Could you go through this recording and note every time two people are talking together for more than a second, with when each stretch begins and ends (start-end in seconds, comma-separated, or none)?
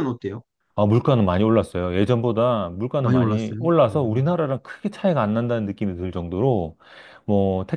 3.0-4.4